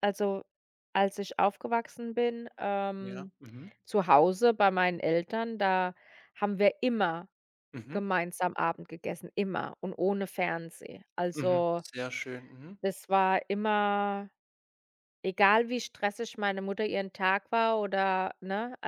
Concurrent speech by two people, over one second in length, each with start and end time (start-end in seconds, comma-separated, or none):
none